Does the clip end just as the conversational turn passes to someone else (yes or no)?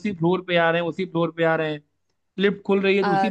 no